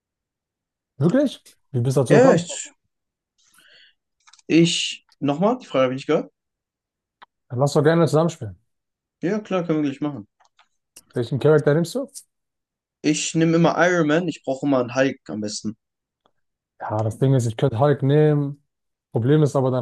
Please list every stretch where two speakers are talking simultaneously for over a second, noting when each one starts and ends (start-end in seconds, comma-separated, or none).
none